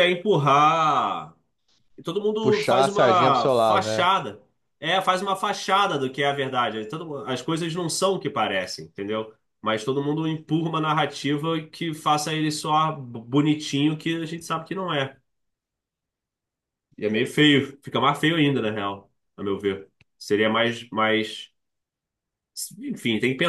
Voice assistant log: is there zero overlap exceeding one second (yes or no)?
no